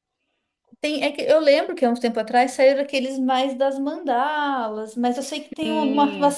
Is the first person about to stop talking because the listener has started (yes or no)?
no